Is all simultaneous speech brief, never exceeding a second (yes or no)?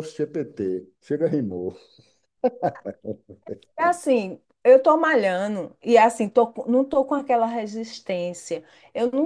yes